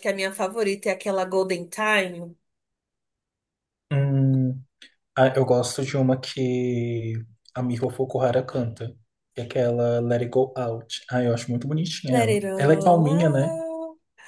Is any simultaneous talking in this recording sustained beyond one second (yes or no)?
yes